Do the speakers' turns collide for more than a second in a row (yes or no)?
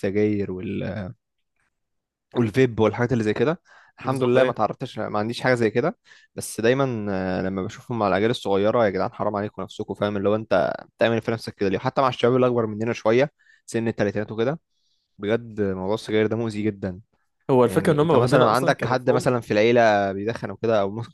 yes